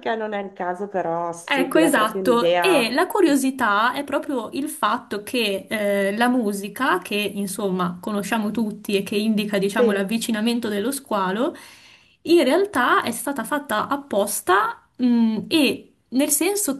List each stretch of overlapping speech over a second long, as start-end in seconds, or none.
1.4-2.9